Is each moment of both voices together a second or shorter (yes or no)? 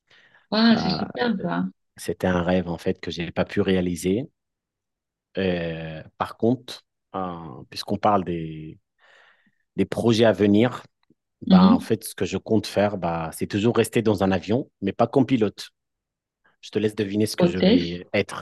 yes